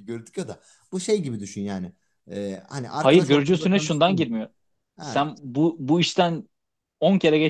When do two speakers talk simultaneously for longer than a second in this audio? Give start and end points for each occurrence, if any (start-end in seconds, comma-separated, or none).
3.0-4.4